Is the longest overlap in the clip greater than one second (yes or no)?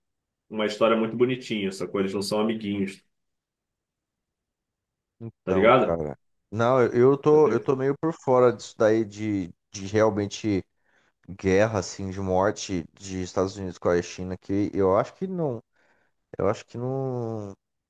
no